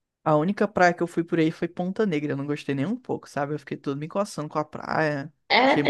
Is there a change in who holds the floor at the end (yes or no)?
yes